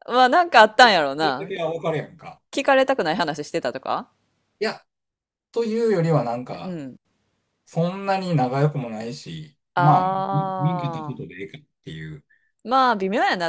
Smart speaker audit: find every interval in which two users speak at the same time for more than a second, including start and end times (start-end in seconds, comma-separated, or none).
9.7-11.4